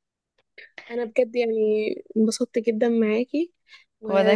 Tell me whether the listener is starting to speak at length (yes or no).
no